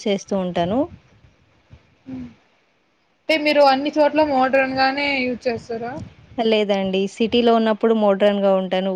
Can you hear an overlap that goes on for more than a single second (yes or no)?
no